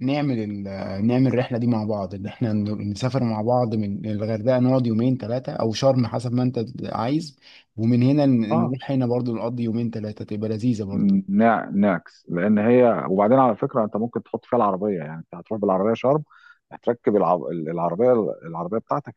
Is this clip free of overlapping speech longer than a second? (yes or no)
yes